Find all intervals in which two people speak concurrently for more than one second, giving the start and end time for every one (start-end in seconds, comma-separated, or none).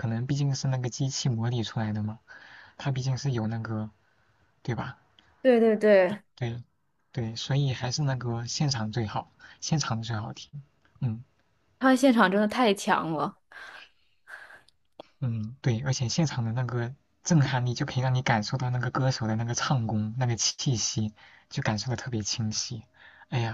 none